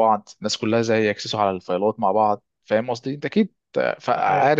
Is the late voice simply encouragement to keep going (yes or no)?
no